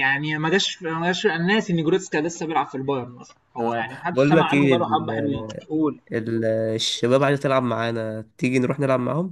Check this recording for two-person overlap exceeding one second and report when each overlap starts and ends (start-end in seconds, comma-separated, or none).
3.6-5.1